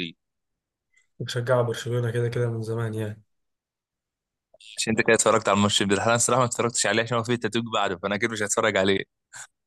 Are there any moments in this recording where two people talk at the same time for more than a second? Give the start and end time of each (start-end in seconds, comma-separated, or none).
none